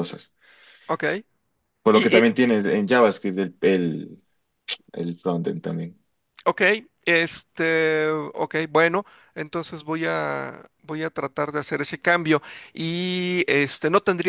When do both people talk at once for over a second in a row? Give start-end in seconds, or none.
none